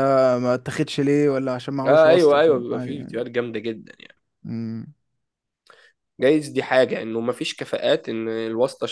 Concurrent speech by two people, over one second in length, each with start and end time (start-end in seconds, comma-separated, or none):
1.9-3.1